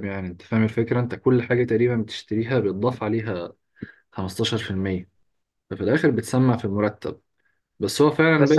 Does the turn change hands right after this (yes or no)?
no